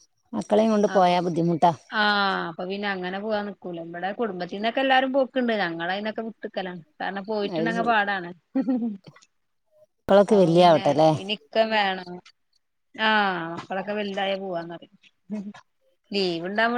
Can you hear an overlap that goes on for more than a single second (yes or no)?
no